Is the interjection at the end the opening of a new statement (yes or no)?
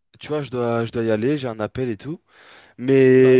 no